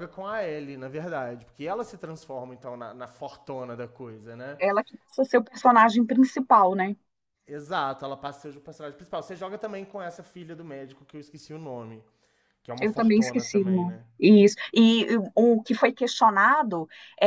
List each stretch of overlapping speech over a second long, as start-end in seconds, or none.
12.8-14.1